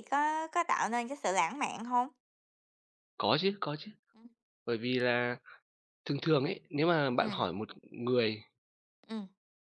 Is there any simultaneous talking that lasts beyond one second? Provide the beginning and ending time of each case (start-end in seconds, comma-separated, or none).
none